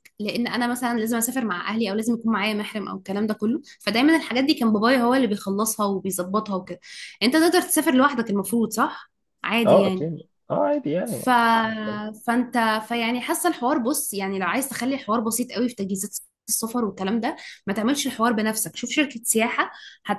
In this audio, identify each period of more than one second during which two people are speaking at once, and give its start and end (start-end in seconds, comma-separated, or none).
none